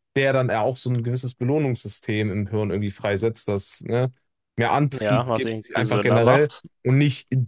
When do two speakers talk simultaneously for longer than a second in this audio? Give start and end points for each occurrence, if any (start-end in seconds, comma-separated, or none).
4.9-6.6